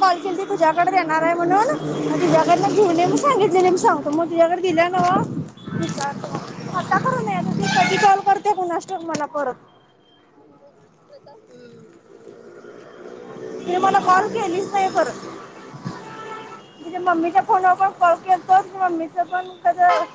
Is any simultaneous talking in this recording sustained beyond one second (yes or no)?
no